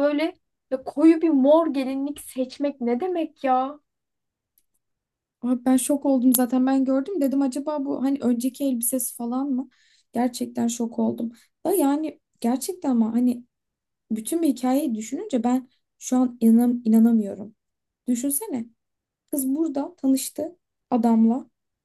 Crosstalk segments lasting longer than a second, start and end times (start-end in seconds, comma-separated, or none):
none